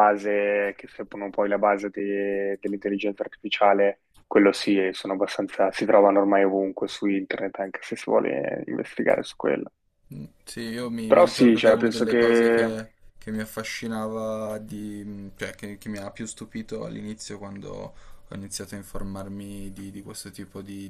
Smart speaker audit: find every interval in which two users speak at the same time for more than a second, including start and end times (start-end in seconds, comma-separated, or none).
11.1-12.8